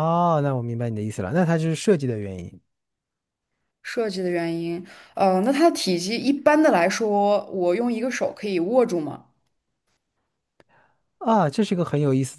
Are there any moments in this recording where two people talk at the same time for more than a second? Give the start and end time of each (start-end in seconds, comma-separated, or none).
none